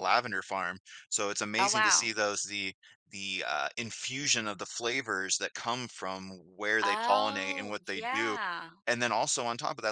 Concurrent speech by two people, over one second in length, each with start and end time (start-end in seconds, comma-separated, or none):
6.8-8.4